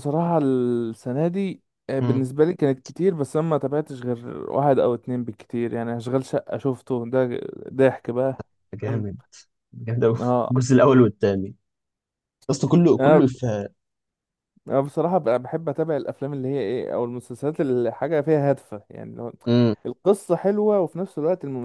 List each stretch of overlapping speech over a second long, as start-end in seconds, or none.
none